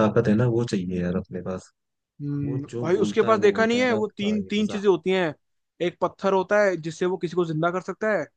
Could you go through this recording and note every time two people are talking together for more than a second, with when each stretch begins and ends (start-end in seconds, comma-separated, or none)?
2.4-4.8